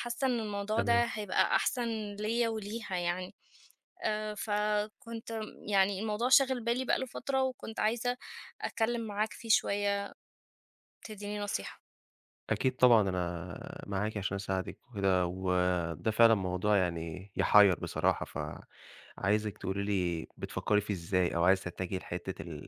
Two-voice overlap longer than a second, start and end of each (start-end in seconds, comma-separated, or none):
none